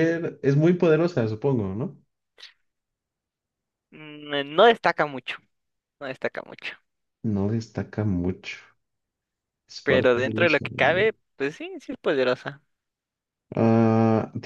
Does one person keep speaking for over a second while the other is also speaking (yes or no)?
yes